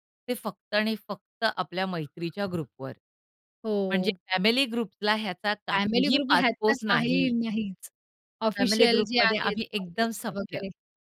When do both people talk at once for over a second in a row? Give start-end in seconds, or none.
5.7-7.3, 8.6-10.6